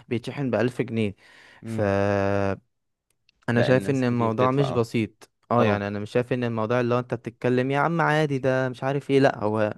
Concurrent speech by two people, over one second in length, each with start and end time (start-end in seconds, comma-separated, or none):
3.6-4.8